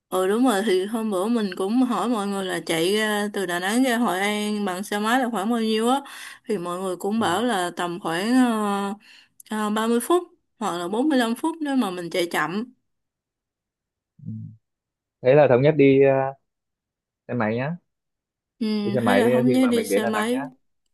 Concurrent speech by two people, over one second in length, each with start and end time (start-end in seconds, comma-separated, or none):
18.8-20.4